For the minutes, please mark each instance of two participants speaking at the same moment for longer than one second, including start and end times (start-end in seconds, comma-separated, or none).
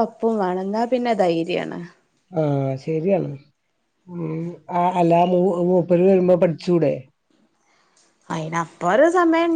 none